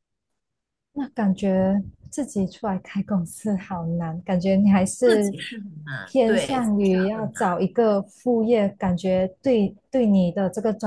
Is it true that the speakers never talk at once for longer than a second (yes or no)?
no